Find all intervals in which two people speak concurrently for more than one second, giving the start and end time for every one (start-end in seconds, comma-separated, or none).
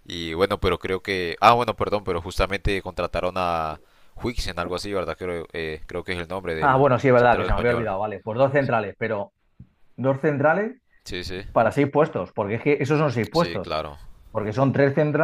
6.6-7.9